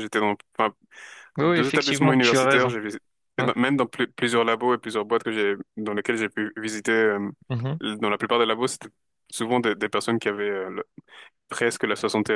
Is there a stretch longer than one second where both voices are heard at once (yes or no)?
yes